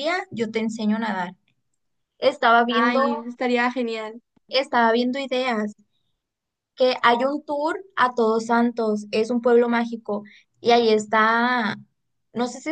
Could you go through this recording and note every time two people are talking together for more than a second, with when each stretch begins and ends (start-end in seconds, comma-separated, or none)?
none